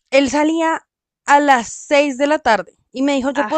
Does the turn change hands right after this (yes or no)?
no